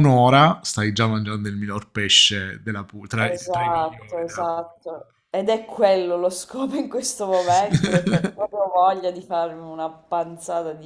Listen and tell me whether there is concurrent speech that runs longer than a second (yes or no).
yes